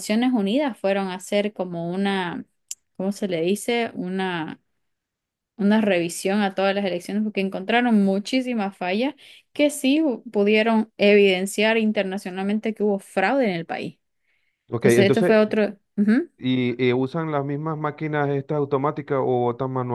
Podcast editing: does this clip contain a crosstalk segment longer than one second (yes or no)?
no